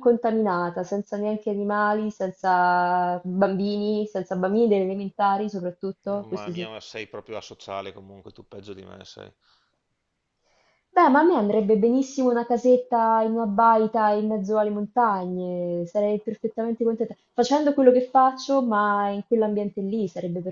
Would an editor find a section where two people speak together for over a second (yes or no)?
no